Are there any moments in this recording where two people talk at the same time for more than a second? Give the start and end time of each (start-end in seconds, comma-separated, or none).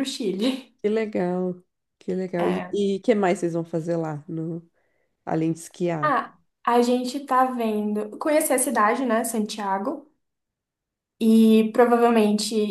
none